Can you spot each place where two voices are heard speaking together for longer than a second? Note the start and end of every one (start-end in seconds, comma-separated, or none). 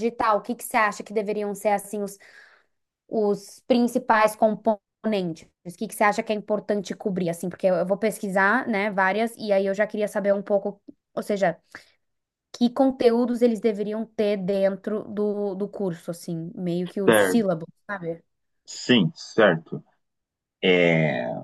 none